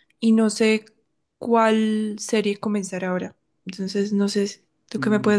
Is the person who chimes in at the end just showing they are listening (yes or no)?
no